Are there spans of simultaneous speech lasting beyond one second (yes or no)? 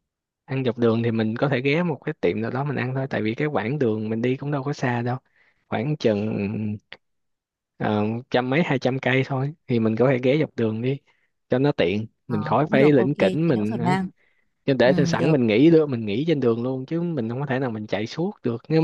yes